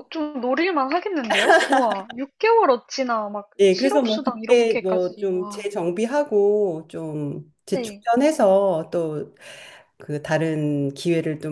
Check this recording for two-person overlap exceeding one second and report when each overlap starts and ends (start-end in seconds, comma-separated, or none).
3.6-5.7